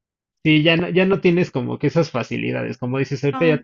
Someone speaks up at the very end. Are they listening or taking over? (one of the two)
listening